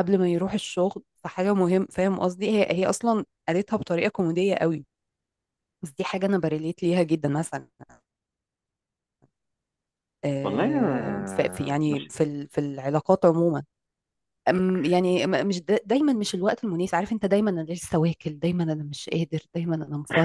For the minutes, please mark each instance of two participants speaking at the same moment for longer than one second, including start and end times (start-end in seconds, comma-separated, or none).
10.4-12.1